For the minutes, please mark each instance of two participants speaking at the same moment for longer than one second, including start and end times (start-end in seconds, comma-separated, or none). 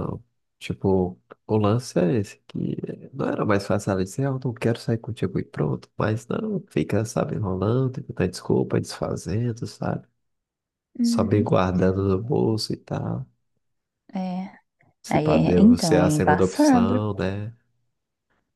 15.1-17.0